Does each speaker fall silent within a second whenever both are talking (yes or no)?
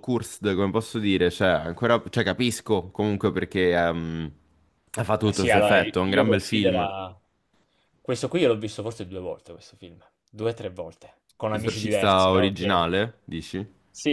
no